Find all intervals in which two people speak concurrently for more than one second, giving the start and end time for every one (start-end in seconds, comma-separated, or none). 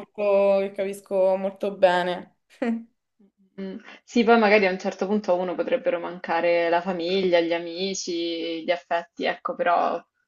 none